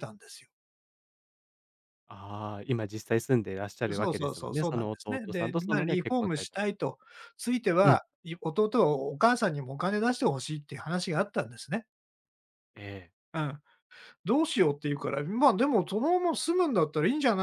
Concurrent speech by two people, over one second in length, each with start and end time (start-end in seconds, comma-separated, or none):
3.9-7.0